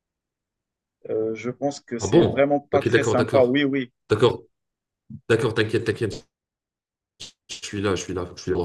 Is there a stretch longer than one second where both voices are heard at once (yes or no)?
yes